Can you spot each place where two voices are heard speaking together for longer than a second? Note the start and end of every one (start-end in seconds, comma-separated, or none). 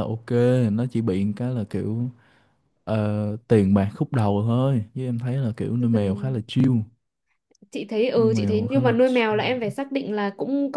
8.2-9.7